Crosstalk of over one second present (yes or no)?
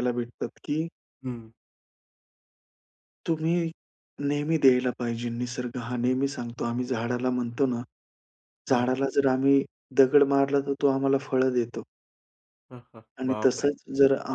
no